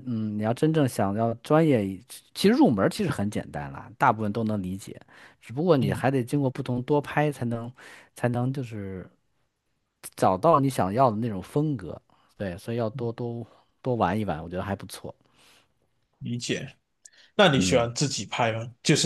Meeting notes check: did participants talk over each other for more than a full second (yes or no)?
no